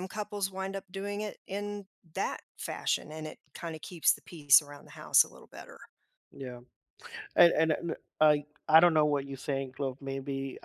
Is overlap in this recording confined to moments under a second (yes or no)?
yes